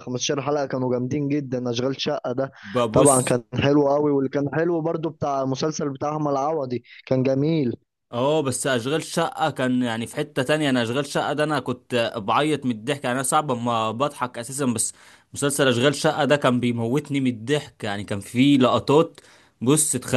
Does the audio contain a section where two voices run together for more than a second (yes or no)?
no